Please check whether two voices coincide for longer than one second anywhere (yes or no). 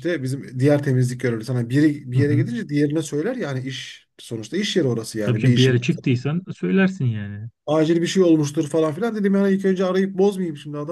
no